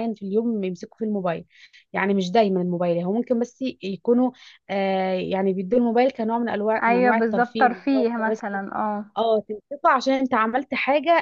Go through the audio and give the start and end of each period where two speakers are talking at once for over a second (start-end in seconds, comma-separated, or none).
6.8-8.4